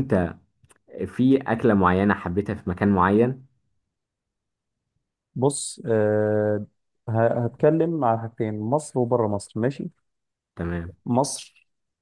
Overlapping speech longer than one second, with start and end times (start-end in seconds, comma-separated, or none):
none